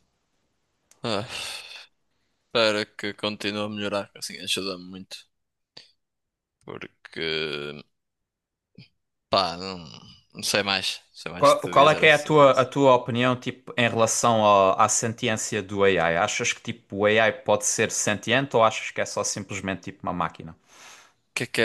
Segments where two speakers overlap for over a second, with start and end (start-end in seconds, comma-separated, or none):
11.4-12.7